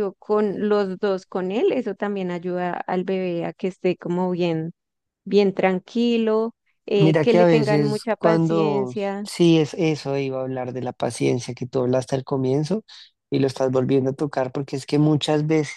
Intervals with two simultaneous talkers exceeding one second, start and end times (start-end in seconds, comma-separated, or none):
7.0-9.3